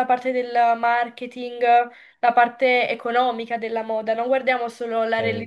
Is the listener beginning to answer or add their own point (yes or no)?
no